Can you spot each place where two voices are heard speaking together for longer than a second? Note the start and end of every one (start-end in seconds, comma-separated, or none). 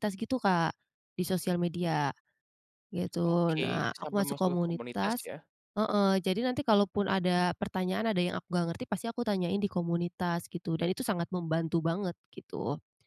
3.2-5.3